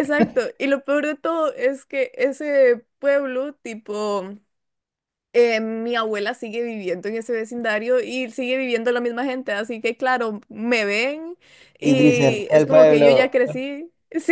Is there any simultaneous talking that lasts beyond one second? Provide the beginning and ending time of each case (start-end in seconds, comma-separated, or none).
11.8-13.3